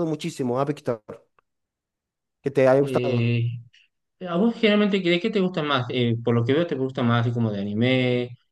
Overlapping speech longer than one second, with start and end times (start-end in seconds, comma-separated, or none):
none